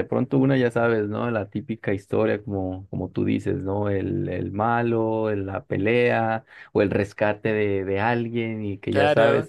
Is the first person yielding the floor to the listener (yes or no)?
no